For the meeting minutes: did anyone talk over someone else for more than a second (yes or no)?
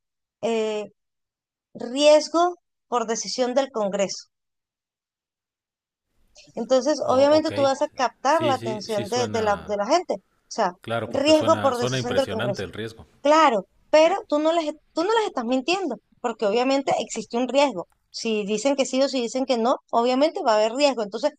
yes